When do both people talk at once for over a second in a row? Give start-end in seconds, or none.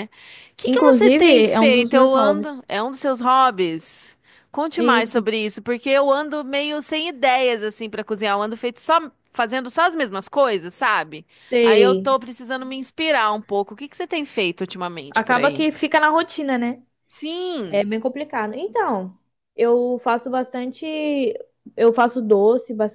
0.6-2.6